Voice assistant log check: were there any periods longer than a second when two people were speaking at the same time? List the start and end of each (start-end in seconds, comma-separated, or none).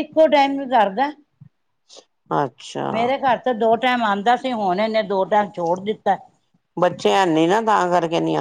none